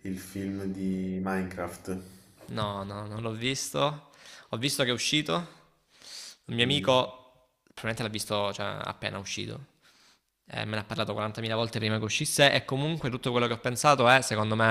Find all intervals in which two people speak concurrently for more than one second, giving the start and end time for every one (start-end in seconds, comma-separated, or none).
none